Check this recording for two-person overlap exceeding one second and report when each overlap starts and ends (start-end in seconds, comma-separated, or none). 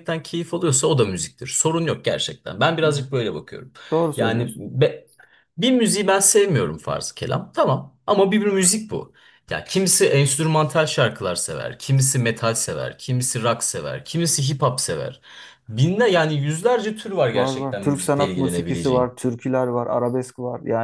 17.3-19.1